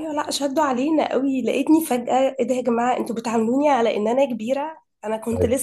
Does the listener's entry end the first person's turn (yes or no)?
no